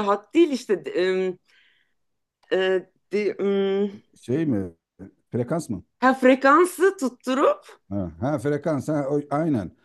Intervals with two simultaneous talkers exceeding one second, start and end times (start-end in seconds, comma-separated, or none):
none